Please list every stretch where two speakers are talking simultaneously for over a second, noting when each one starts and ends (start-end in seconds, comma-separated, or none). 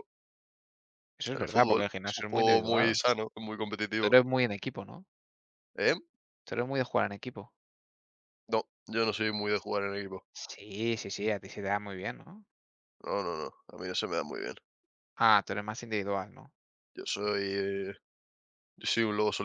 1.3-3.0